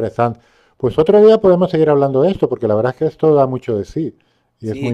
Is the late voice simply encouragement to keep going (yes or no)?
no